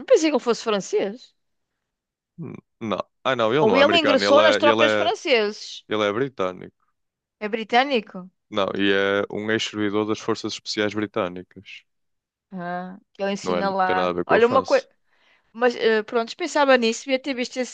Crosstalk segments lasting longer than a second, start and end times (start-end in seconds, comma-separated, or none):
3.6-5.1, 13.4-14.8